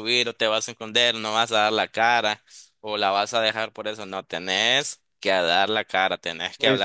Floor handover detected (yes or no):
yes